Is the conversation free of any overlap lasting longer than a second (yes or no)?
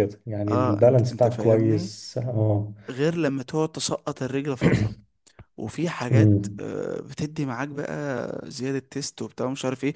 no